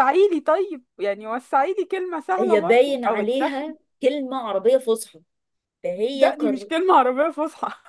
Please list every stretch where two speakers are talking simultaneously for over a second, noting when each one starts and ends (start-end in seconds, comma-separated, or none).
2.4-3.6